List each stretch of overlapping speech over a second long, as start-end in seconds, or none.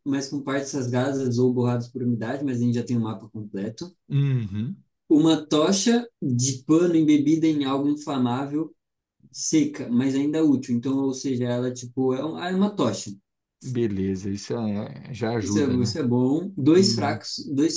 none